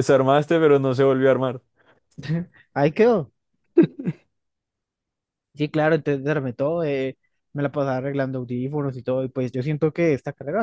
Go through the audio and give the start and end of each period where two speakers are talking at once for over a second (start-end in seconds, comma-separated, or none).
none